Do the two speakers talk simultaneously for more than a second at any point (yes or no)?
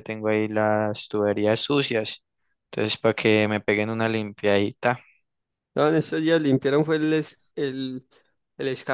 no